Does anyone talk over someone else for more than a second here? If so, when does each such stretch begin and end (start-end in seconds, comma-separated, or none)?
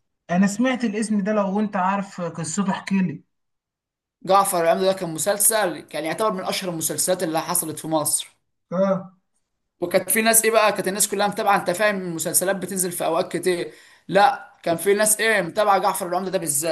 none